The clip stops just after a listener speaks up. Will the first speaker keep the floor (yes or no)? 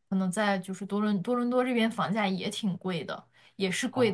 yes